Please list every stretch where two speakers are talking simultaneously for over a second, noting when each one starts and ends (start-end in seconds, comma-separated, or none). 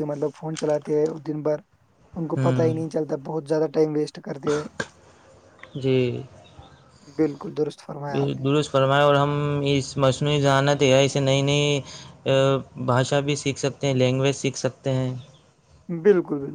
none